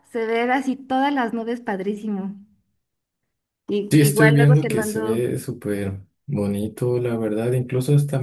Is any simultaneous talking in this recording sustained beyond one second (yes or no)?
yes